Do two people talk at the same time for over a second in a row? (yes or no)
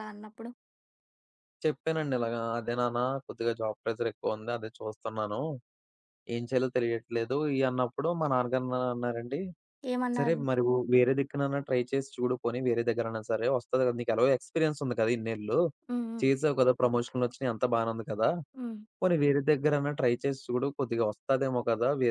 no